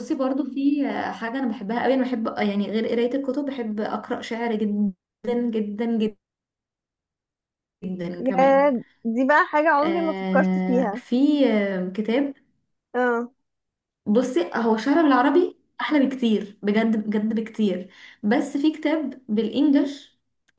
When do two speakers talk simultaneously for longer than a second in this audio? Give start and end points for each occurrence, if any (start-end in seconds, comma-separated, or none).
9.8-11.0